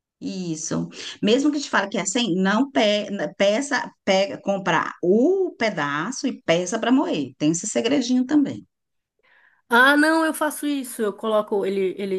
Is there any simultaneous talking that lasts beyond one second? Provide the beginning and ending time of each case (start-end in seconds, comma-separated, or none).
none